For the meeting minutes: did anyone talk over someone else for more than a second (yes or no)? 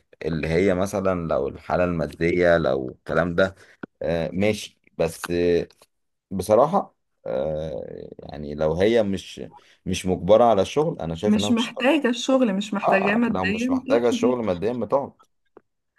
yes